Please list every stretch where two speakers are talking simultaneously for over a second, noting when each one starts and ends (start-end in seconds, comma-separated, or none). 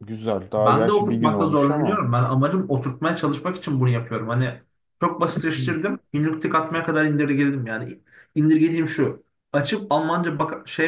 0.6-2.0